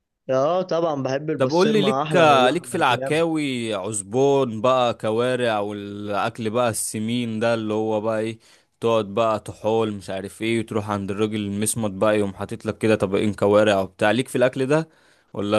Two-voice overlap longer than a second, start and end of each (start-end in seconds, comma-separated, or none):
1.4-2.8